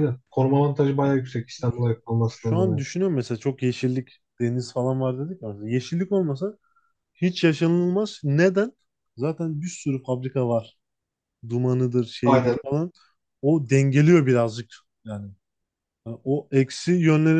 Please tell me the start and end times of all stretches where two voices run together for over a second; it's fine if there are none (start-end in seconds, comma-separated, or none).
none